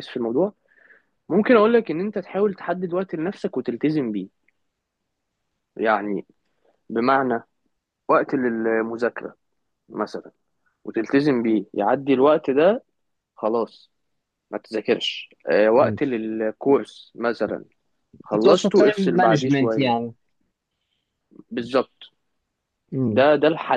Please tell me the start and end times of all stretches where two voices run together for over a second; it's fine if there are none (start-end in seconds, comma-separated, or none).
18.4-19.9